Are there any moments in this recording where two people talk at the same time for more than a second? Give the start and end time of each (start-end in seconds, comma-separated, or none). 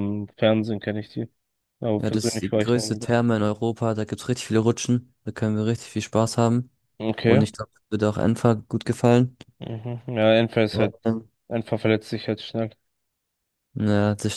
2.0-3.2